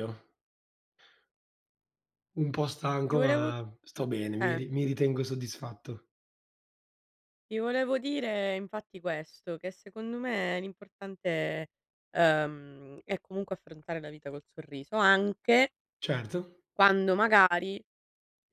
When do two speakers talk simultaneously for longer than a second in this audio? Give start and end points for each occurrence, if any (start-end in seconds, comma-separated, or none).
none